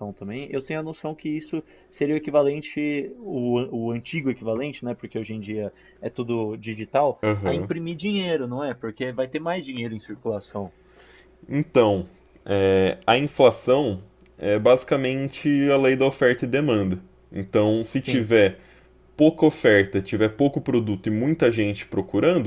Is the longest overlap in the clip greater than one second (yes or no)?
no